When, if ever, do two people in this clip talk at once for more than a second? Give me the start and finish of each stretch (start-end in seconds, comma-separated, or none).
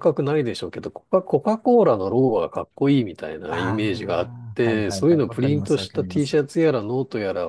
3.5-6.4